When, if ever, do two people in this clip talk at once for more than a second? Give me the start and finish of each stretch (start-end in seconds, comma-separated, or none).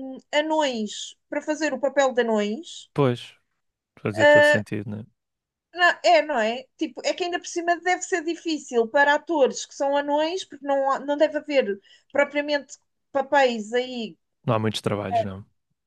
none